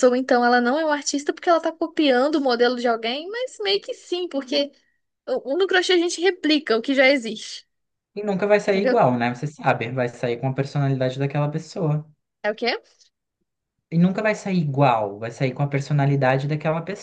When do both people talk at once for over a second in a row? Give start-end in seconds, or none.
none